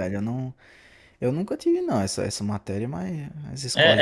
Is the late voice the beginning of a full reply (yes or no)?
yes